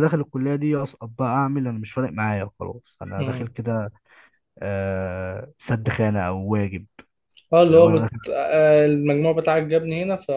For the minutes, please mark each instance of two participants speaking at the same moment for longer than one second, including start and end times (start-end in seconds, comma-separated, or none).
none